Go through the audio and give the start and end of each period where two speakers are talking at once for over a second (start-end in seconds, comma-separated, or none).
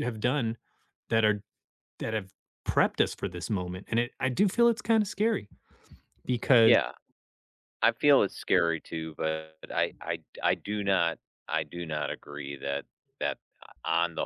none